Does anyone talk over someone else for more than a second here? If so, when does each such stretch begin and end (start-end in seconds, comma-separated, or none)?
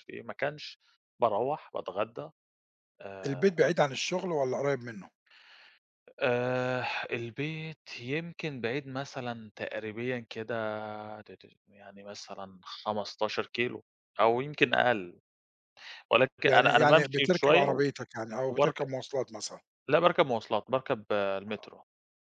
16.5-17.8